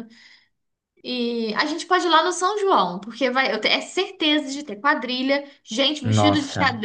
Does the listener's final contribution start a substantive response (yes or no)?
no